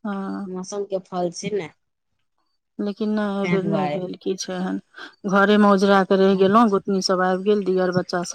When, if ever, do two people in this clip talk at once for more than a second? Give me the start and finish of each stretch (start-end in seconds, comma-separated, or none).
none